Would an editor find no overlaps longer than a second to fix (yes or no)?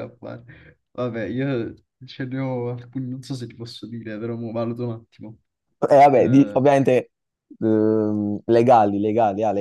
yes